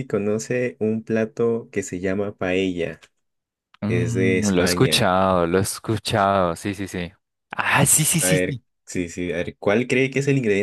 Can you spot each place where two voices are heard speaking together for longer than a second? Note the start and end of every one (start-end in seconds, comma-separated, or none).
3.9-5.1